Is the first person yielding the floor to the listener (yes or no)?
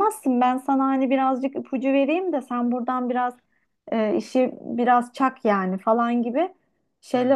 no